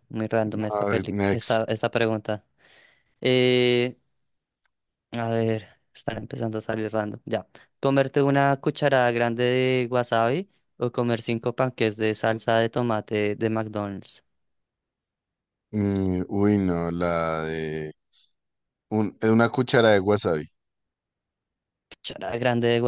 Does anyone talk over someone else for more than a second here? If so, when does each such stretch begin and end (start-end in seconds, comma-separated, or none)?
0.5-1.8